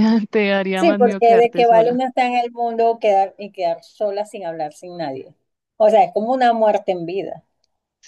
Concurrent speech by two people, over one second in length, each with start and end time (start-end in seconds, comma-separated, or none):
0.7-2.0